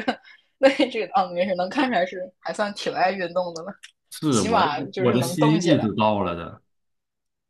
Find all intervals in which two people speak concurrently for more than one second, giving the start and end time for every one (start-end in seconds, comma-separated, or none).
4.3-5.9